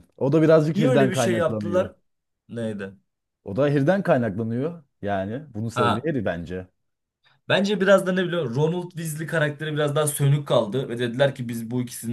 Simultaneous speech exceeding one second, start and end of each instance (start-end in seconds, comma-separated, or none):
0.7-1.9